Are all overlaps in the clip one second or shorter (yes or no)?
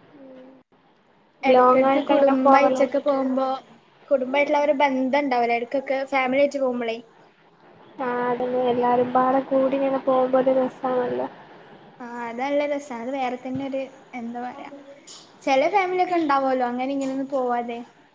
no